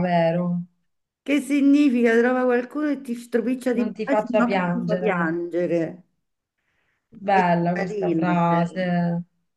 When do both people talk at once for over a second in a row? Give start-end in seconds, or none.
3.7-5.3, 7.3-8.9